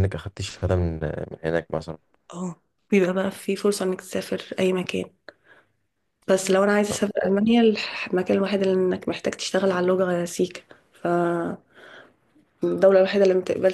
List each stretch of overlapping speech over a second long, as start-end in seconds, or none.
none